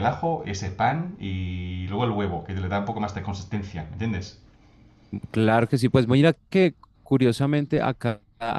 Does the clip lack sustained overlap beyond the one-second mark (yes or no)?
yes